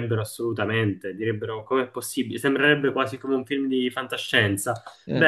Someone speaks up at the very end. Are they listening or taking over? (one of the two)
listening